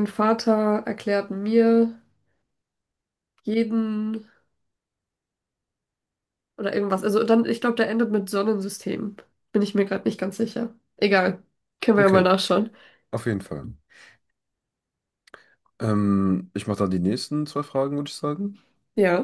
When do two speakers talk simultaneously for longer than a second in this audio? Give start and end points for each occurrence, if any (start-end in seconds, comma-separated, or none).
none